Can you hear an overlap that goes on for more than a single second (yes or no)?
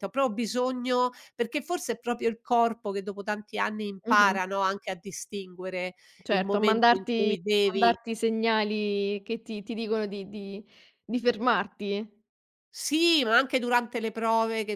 yes